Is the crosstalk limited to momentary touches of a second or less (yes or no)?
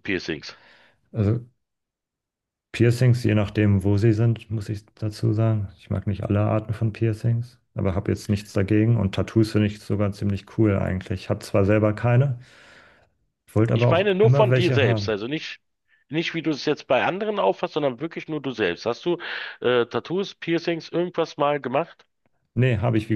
no